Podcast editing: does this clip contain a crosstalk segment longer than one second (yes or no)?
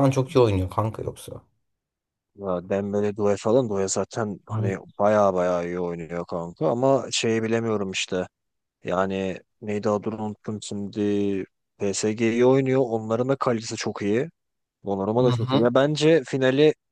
no